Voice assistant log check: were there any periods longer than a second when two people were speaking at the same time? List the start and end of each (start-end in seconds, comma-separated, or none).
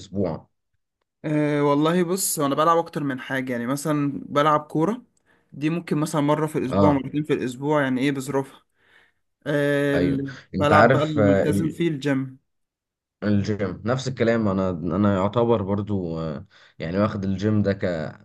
9.9-11.4